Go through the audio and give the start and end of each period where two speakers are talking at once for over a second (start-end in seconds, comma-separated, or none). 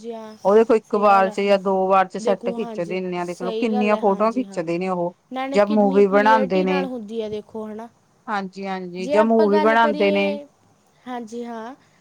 2.2-4.6, 5.5-6.9, 9.0-10.3